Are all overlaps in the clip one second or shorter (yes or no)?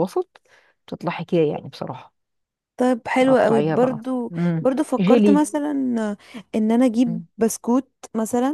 no